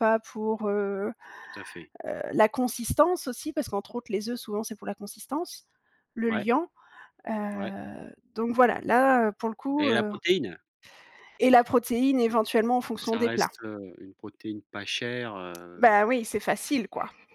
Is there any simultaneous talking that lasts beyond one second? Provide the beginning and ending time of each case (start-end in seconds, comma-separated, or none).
none